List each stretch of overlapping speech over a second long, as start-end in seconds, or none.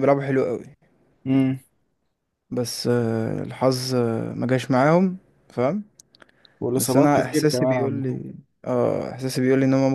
6.8-8.2